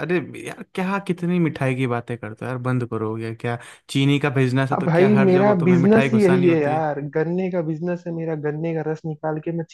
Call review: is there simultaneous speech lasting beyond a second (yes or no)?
yes